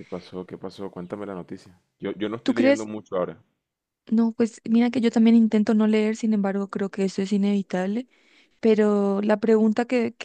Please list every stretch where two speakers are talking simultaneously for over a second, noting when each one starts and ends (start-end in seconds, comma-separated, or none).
none